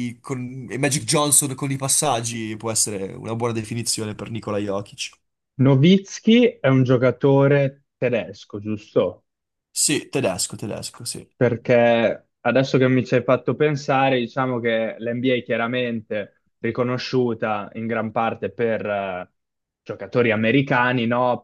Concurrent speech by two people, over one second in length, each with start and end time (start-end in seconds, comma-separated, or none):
none